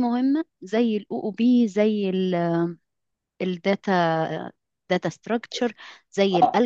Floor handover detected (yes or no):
no